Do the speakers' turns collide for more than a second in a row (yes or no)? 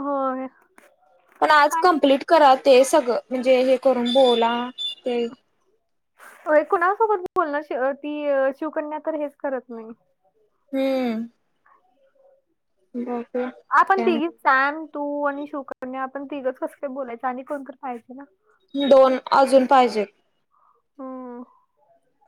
no